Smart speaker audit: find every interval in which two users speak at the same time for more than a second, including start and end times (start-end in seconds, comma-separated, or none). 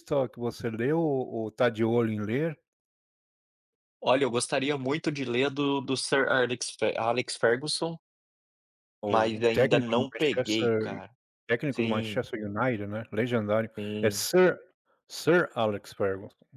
9.1-10.8